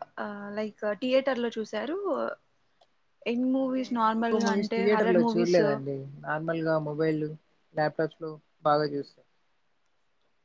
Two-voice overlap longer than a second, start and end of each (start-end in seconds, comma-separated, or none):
3.6-5.6